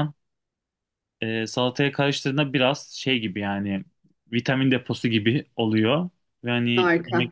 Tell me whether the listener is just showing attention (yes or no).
yes